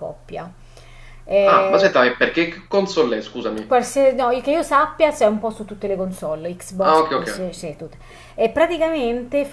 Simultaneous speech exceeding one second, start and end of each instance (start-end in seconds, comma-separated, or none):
none